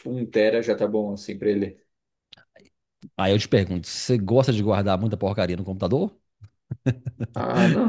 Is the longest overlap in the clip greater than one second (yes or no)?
no